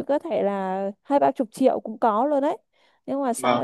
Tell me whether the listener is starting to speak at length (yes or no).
no